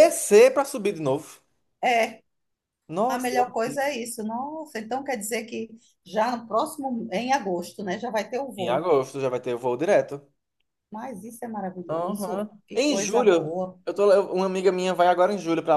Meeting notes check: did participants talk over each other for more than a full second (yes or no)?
yes